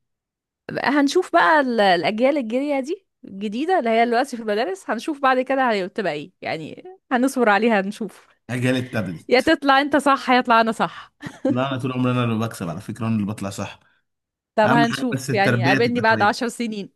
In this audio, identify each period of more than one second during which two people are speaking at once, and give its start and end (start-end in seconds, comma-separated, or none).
14.6-16.4